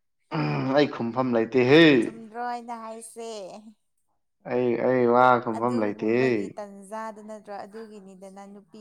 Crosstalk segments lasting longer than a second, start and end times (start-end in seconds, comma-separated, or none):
none